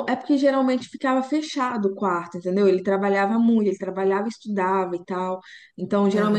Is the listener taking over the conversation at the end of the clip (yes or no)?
no